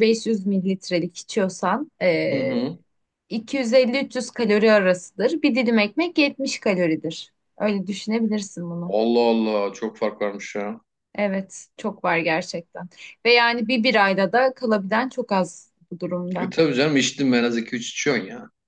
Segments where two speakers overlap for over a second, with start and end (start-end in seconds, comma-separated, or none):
none